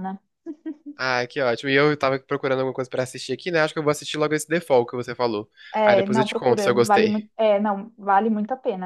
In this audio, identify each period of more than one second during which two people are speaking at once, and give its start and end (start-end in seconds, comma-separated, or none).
5.8-7.2